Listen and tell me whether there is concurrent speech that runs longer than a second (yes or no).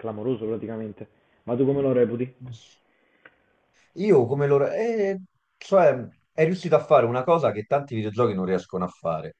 no